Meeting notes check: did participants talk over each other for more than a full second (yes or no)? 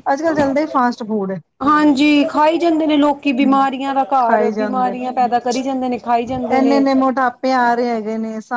no